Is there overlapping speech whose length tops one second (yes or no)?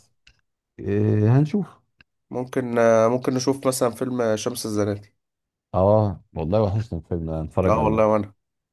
no